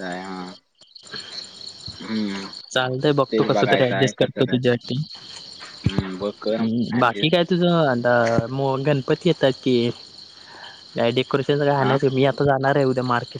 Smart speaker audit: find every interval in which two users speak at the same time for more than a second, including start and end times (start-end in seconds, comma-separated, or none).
3.3-4.9